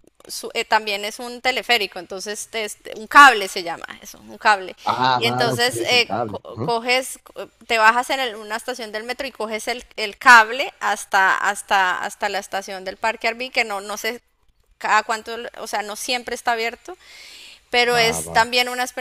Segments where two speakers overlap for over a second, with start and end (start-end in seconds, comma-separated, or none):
5.2-6.7